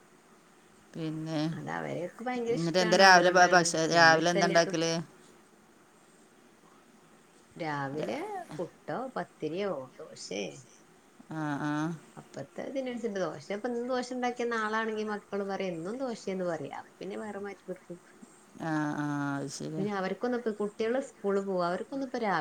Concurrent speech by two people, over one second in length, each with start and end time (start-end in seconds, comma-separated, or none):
2.6-4.7